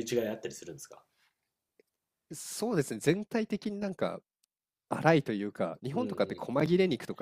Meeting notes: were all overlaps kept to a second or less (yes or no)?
yes